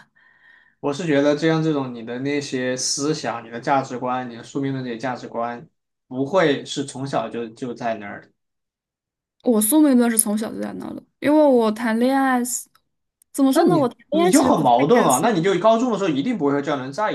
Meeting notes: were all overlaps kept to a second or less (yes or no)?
no